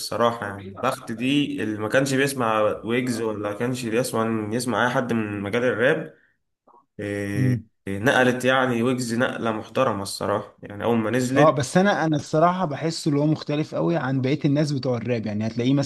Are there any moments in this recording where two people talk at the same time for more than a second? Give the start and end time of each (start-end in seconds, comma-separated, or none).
none